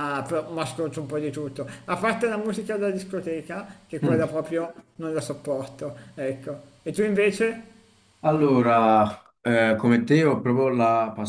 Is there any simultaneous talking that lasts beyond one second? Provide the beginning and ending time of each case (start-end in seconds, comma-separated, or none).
none